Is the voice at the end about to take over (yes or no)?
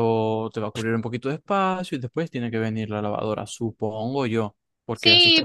yes